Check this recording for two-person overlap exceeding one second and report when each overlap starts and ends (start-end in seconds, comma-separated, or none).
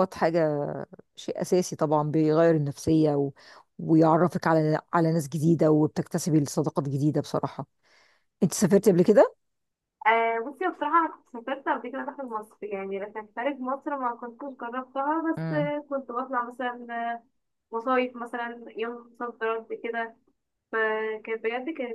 none